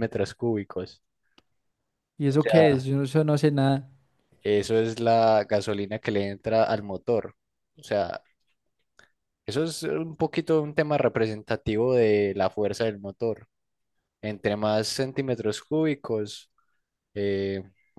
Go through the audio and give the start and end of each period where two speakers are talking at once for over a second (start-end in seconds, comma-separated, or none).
none